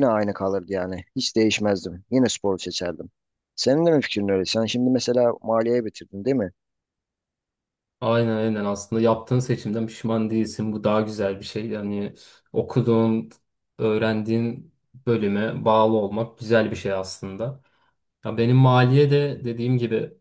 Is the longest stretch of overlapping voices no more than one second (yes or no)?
yes